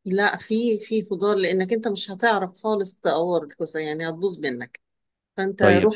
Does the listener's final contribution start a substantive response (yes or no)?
no